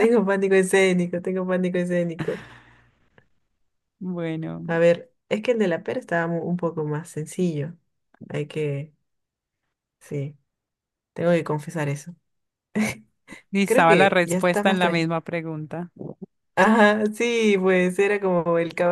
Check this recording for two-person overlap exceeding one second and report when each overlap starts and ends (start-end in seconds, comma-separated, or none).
13.7-15.1